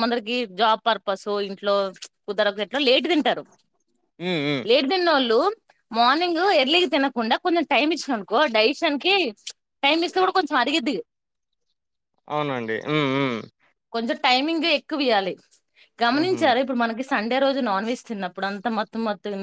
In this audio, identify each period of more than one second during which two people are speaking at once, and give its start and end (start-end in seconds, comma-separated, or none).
none